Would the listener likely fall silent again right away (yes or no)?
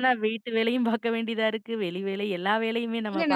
no